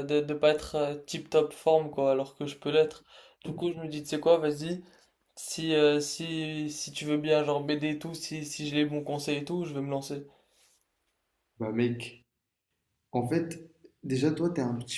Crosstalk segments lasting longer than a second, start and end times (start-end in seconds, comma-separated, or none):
none